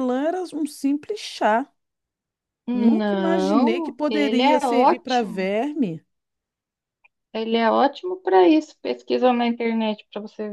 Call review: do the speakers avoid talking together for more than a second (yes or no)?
no